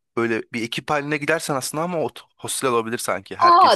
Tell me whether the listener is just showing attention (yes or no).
no